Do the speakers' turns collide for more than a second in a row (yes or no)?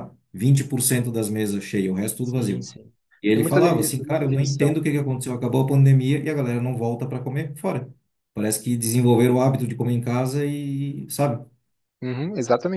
yes